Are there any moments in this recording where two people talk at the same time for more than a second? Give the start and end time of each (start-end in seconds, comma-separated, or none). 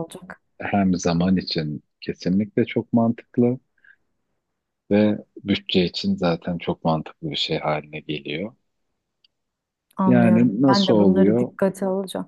10.1-11.5